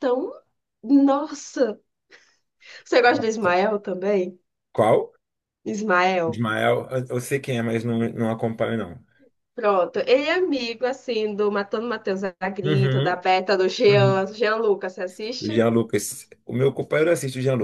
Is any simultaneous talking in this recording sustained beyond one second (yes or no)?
no